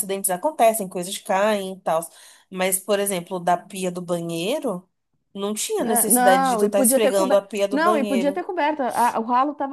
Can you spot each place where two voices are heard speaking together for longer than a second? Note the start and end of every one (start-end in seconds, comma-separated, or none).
5.8-8.4